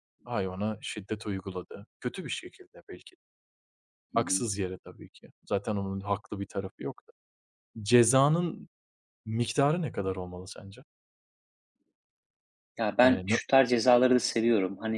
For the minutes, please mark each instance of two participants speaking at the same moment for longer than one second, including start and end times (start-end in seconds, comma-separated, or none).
none